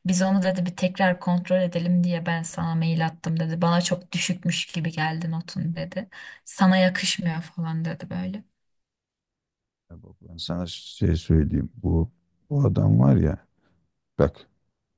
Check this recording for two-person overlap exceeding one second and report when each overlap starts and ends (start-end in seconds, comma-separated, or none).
none